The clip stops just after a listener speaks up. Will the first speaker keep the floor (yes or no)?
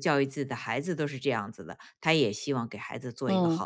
no